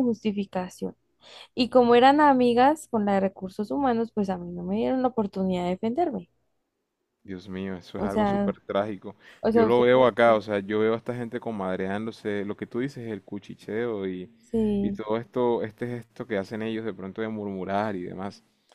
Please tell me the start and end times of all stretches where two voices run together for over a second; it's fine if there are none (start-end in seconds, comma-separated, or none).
none